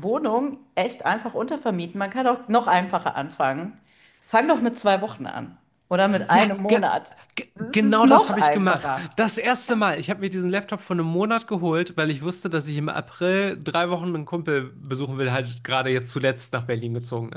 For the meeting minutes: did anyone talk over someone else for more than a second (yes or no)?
yes